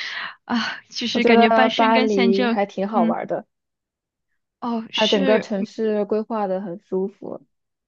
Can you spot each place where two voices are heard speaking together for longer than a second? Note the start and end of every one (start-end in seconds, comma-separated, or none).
1.1-3.2